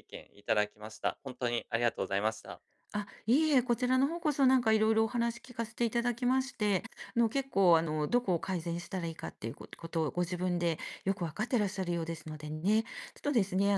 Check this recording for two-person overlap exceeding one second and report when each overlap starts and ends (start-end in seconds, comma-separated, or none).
none